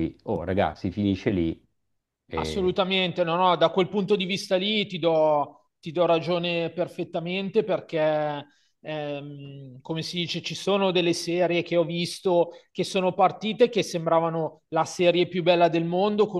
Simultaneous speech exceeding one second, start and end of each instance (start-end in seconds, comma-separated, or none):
none